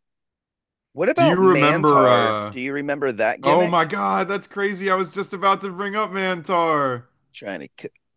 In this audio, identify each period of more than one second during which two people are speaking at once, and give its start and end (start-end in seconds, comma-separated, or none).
1.1-2.5